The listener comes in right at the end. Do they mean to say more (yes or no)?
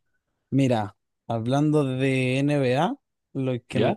no